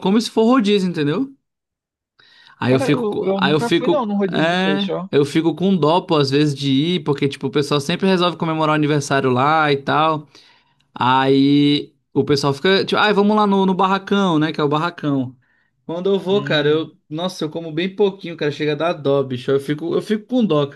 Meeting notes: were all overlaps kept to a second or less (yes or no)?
no